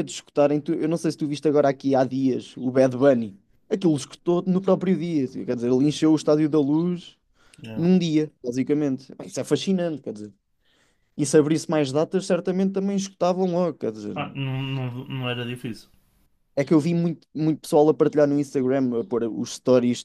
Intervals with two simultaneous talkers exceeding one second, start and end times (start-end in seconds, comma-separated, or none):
none